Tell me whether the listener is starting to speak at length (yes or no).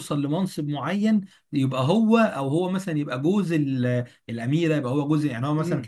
yes